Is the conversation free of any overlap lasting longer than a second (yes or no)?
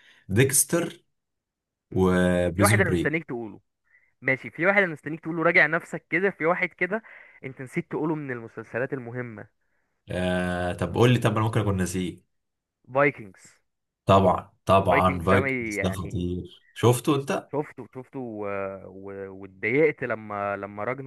no